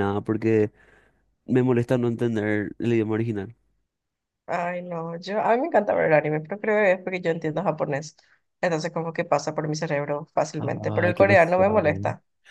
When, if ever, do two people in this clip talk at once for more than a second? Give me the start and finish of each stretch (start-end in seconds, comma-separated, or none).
10.6-11.8